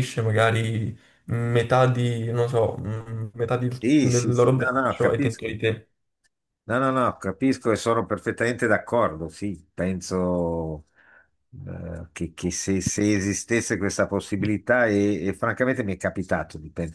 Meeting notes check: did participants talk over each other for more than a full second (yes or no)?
yes